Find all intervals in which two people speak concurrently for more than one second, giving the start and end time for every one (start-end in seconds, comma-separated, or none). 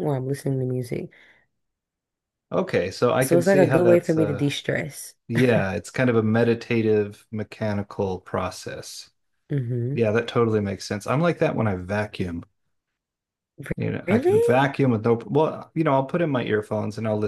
3.2-4.5